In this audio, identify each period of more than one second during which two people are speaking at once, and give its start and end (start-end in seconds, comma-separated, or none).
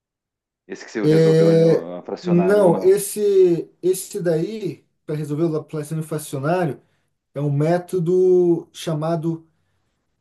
1.1-3.0